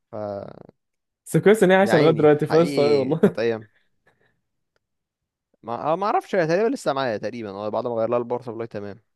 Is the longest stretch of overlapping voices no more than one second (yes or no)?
no